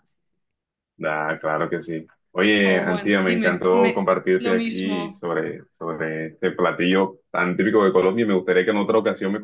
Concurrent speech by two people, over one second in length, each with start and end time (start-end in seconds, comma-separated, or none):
2.6-5.2